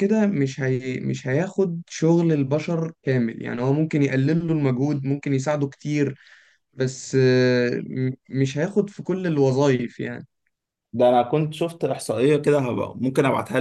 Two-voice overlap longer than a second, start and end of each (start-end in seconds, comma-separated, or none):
none